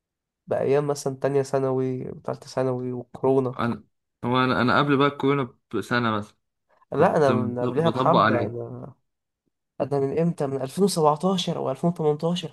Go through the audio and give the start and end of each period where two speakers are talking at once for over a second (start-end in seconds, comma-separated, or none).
6.9-8.6